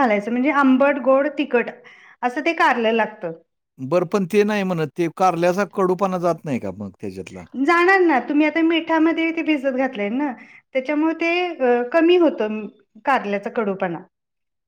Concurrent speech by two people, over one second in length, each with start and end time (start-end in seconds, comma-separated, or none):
none